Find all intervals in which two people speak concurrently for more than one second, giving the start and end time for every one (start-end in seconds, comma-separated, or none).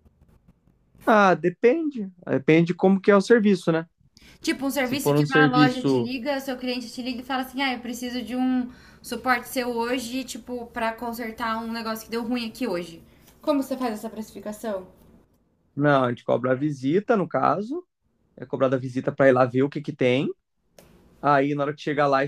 4.8-6.1